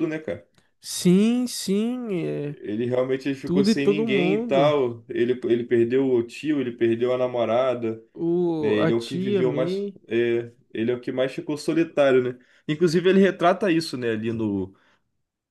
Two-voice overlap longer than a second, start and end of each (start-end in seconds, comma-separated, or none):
3.4-4.8, 8.6-10.0